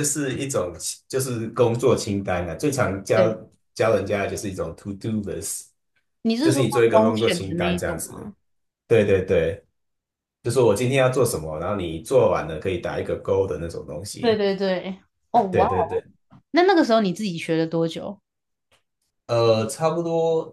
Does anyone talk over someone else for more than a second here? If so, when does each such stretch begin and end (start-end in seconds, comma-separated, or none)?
6.4-8.3